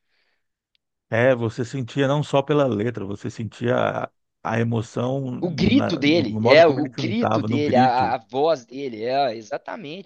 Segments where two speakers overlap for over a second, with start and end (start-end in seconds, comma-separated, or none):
5.4-8.2